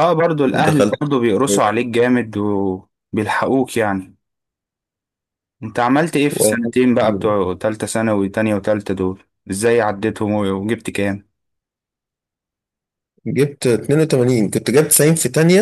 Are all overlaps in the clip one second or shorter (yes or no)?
yes